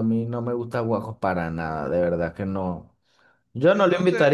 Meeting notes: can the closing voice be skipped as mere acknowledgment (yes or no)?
yes